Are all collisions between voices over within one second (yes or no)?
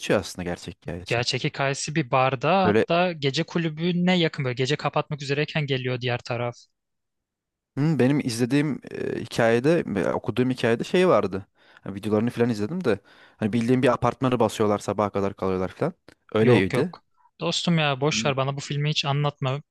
yes